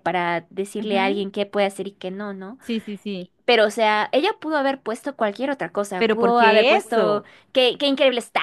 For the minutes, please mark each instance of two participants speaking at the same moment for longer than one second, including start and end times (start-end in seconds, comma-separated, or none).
6.0-7.3